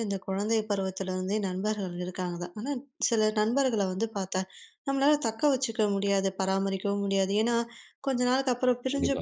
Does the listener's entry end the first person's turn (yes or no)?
no